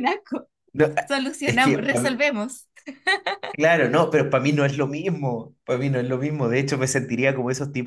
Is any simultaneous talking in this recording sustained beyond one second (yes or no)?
no